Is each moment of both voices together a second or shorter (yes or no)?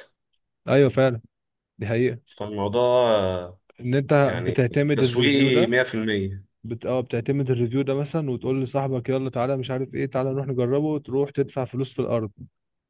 no